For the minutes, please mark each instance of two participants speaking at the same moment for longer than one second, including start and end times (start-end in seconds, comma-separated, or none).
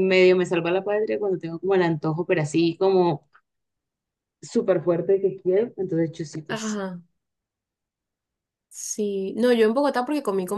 none